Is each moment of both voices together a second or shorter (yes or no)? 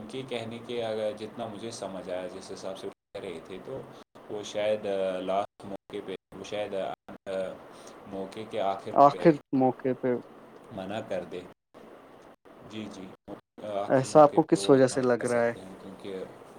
no